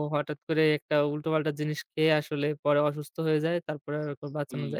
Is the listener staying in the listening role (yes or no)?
no